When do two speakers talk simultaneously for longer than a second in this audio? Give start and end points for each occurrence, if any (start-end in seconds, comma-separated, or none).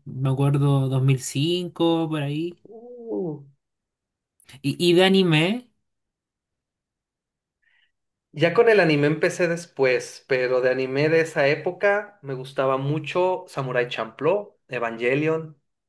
none